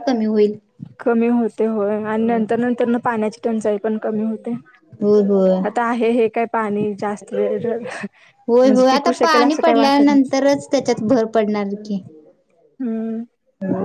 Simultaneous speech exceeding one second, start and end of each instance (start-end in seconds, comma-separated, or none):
8.5-10.3